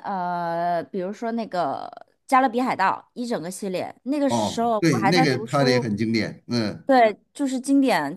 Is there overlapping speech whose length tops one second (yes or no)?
yes